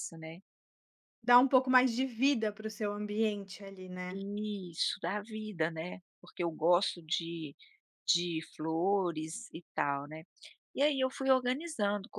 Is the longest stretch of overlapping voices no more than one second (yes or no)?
yes